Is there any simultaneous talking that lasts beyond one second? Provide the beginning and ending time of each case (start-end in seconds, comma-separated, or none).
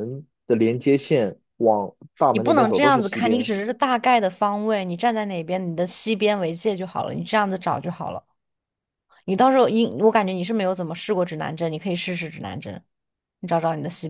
2.3-3.5